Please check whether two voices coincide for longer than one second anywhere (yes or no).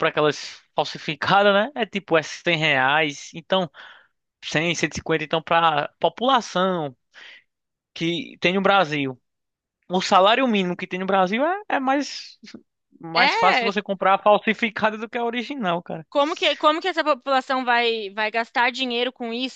no